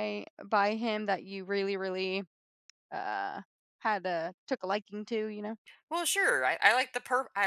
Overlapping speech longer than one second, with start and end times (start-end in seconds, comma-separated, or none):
none